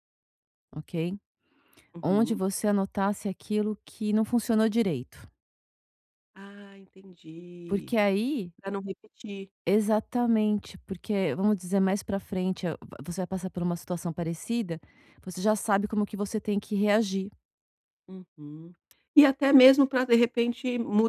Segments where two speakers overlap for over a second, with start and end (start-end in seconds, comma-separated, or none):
none